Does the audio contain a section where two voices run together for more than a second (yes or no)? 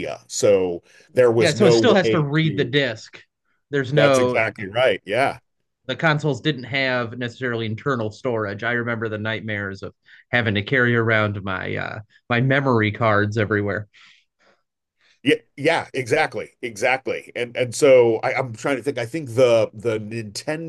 yes